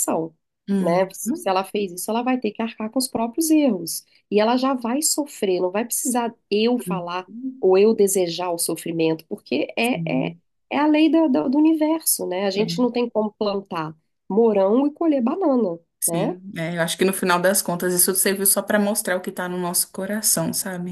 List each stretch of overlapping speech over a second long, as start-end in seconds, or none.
none